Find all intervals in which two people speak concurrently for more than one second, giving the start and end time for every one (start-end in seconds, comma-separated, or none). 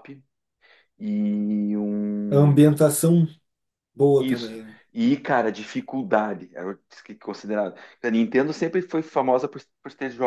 none